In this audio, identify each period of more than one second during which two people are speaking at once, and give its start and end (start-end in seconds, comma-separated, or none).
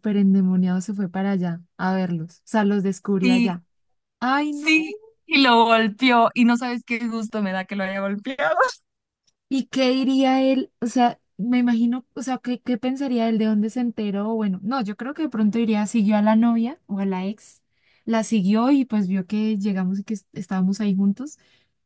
none